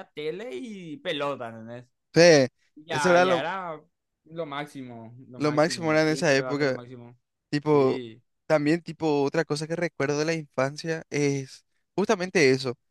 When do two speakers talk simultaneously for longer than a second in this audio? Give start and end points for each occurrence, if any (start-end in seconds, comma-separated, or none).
5.3-6.8